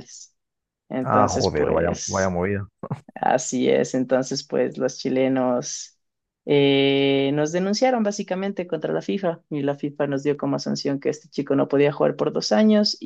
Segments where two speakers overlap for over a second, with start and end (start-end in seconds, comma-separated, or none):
1.0-2.4